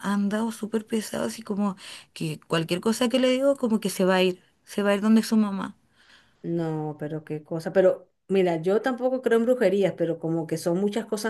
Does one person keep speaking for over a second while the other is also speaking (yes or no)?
no